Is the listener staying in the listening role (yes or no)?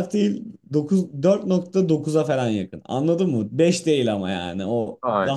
yes